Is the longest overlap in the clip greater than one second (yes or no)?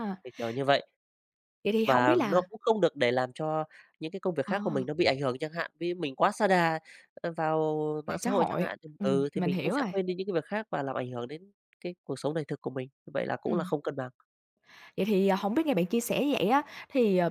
yes